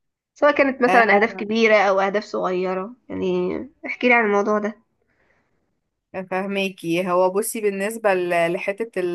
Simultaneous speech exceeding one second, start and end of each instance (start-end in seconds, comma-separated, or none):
none